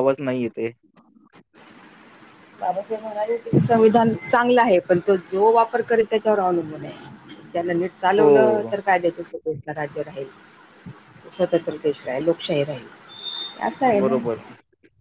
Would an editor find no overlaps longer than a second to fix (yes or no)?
yes